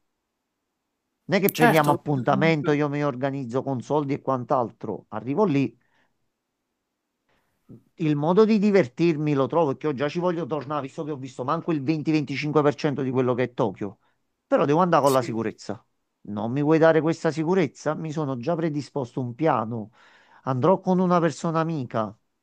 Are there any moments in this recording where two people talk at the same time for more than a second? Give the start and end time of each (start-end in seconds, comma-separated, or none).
1.5-2.8